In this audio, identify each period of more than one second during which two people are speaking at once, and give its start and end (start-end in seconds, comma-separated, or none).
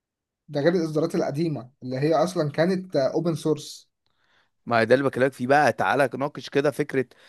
none